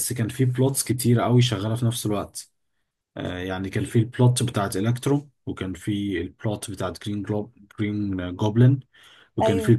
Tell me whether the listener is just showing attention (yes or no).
yes